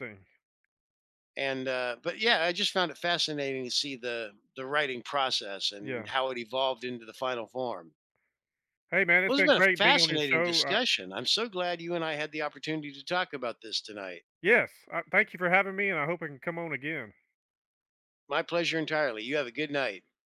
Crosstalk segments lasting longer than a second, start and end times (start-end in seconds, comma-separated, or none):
9.3-10.8